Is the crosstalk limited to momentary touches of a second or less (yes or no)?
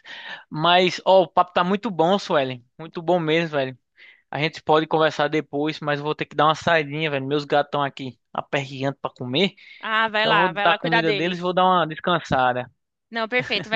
no